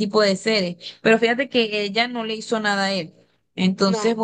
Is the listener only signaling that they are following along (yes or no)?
yes